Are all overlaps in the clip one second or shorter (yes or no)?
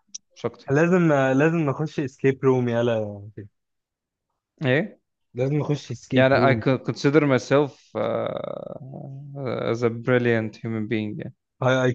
yes